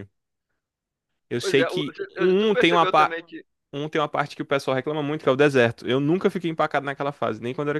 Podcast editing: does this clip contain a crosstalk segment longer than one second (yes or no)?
yes